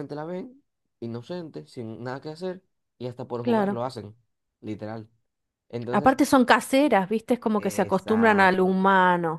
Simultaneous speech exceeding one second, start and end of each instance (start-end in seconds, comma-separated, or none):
7.6-8.8